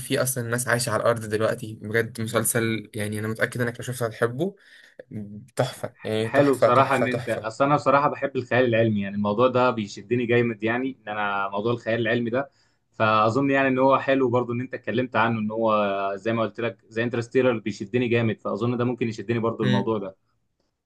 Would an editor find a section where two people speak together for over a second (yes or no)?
yes